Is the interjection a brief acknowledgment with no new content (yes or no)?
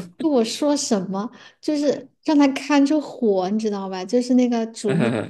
yes